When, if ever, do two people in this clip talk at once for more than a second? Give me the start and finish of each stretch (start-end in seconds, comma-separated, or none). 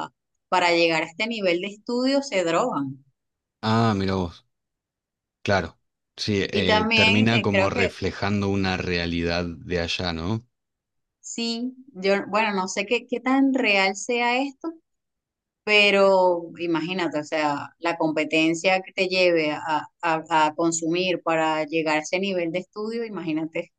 6.5-8.0